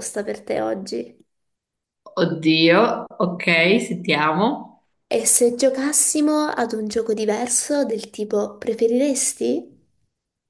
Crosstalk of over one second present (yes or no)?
no